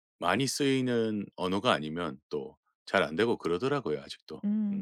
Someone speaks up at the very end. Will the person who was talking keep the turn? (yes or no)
no